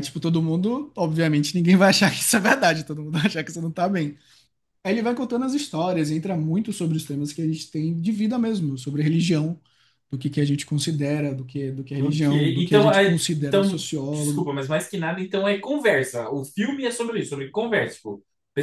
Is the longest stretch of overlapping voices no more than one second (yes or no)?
no